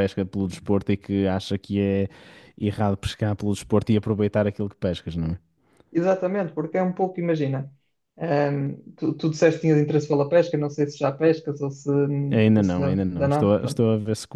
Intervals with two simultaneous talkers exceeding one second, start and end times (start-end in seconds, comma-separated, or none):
12.5-13.8